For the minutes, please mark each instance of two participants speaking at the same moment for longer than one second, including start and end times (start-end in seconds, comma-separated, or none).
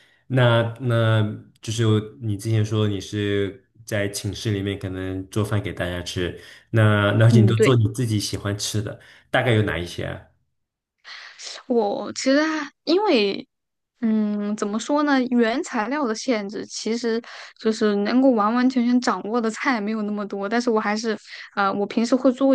none